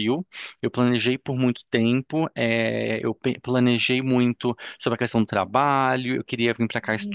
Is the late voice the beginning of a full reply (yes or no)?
no